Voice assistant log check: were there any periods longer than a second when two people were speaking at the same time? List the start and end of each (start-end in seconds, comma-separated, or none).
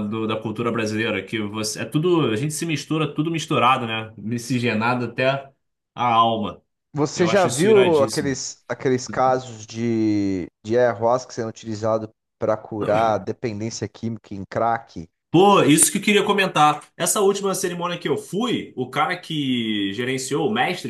7.2-8.4